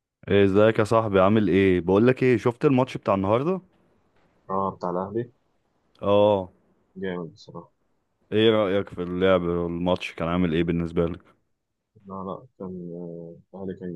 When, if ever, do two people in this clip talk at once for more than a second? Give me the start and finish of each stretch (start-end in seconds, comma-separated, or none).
none